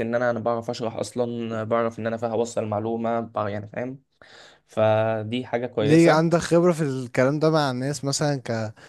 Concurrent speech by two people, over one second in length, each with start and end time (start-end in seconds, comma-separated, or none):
none